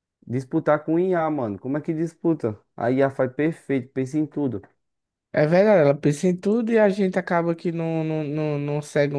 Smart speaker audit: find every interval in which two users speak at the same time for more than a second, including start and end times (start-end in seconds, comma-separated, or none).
none